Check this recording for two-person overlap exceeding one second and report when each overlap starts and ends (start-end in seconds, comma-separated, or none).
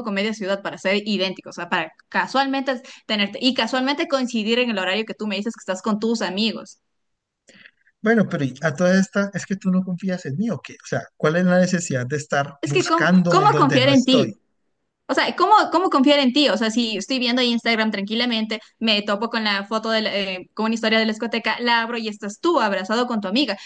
12.6-14.3